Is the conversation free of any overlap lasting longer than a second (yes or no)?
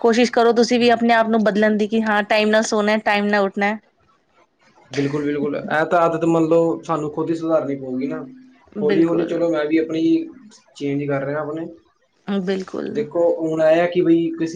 yes